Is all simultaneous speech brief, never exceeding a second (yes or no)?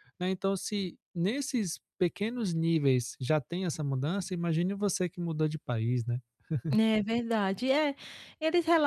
yes